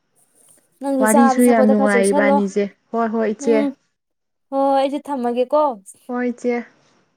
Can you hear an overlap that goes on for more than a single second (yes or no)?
yes